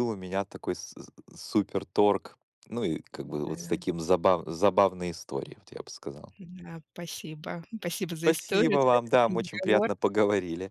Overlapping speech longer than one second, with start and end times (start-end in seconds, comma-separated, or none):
8.2-9.9